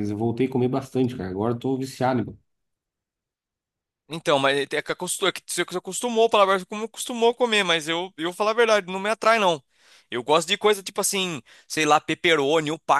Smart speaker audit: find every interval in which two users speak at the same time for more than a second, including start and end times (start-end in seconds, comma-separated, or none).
none